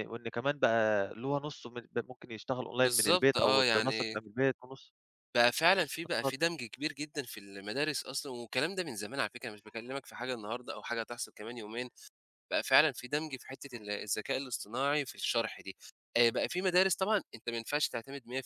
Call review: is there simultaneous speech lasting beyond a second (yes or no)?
yes